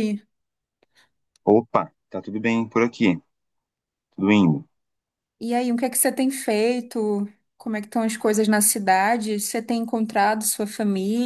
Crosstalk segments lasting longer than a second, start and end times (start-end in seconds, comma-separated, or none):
none